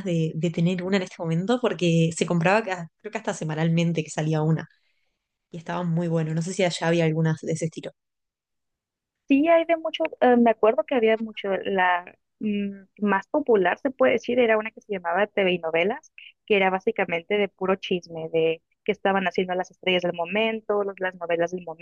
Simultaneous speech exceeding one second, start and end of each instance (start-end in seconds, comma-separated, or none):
none